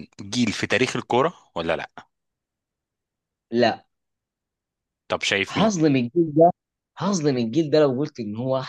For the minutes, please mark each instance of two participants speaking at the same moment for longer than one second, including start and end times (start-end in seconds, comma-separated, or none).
none